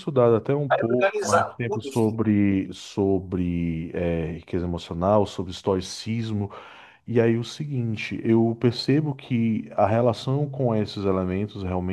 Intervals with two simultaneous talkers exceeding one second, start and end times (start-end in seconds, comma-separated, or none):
0.7-2.2